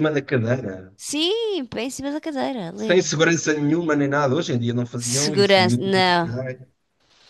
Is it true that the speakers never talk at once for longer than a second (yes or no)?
no